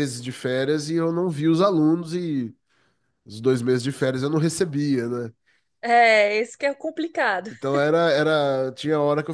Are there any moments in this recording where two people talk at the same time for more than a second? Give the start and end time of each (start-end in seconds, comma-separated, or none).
none